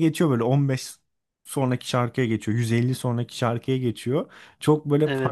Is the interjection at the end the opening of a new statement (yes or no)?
no